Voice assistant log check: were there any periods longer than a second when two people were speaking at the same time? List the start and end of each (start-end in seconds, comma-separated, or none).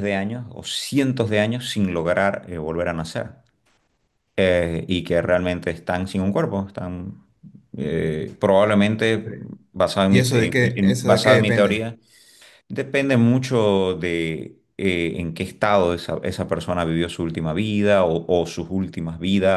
10.1-11.9